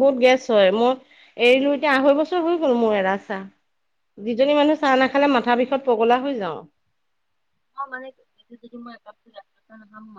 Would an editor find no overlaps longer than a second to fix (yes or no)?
yes